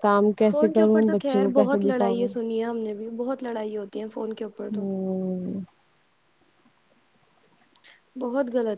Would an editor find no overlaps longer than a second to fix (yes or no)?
no